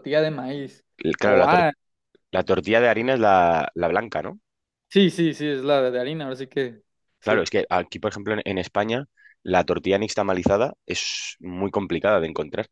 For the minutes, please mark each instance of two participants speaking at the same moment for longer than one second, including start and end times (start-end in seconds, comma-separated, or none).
none